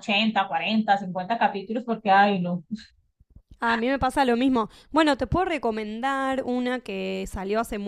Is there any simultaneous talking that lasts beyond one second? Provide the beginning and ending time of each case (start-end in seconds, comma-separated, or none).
none